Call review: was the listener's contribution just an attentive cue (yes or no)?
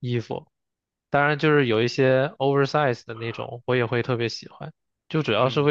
yes